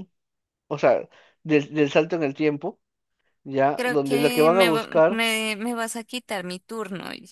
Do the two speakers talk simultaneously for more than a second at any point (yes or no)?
yes